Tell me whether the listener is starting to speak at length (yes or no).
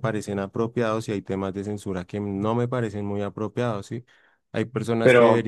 no